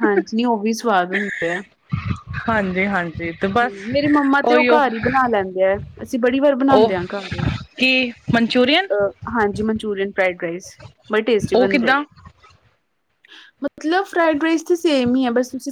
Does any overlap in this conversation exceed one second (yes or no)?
no